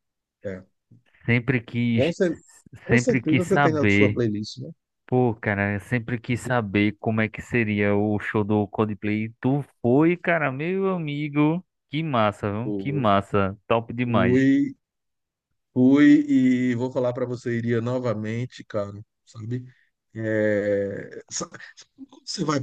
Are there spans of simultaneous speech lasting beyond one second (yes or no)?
yes